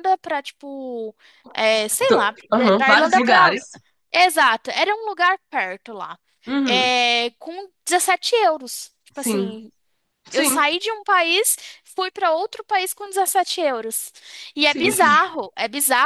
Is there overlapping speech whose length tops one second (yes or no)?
yes